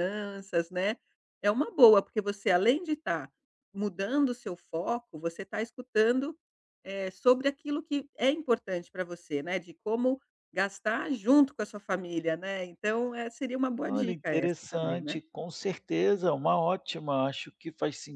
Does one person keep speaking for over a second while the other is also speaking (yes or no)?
yes